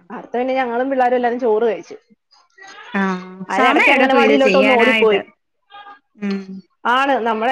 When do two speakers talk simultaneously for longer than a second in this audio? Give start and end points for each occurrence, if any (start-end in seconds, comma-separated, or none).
3.5-5.2